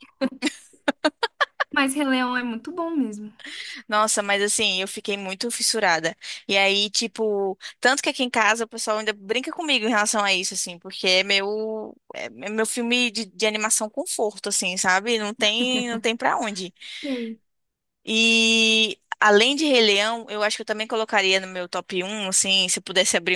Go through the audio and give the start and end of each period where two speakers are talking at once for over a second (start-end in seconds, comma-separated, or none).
none